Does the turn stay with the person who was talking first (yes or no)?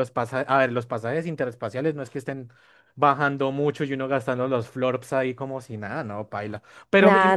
yes